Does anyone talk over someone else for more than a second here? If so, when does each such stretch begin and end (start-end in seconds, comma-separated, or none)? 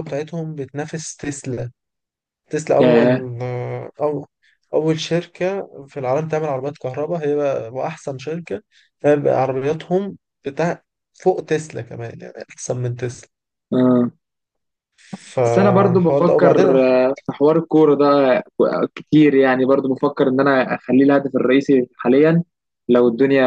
15.4-16.8